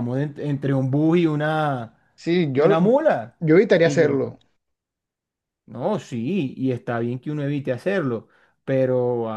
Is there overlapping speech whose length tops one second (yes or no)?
no